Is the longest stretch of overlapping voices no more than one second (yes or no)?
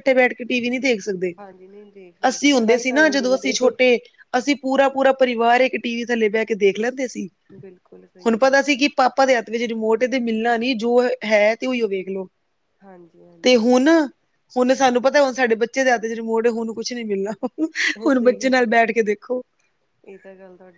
no